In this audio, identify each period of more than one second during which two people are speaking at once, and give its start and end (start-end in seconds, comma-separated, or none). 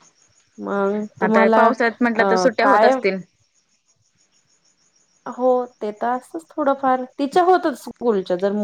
1.2-2.9